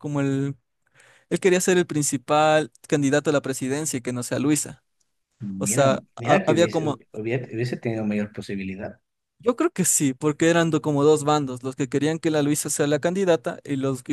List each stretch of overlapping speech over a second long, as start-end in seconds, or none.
5.6-7.0